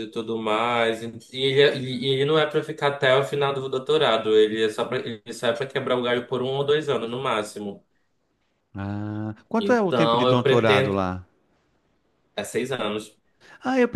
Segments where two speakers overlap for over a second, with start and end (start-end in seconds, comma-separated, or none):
9.6-11.0